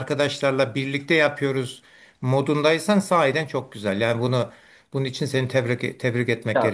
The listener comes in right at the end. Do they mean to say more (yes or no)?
yes